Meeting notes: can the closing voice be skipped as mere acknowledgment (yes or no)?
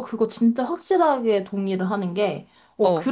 yes